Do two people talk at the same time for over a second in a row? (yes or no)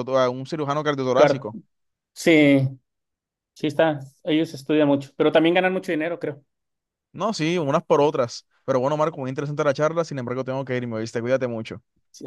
no